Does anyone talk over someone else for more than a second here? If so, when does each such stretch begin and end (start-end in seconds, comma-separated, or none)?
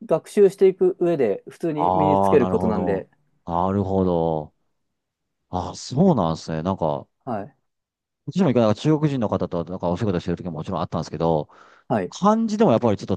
1.7-3.1